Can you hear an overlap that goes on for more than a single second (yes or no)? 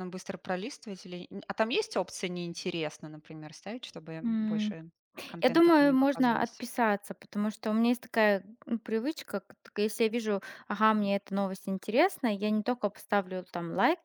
yes